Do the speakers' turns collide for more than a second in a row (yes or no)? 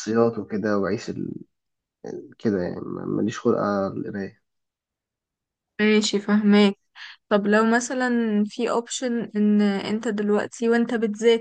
no